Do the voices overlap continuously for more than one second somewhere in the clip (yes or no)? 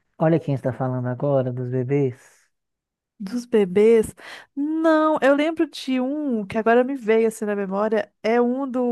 no